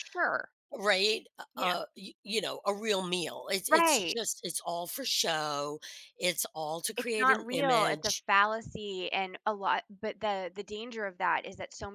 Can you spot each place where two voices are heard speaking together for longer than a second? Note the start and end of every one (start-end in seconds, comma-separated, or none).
7.0-8.2